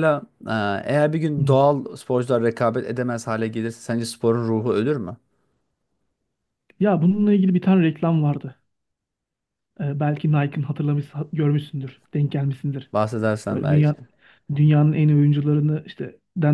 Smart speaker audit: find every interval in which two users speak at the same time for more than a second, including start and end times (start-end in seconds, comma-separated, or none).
none